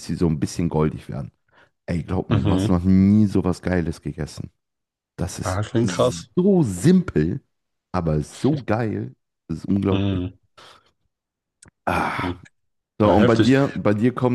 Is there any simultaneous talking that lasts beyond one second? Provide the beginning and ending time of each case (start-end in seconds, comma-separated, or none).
none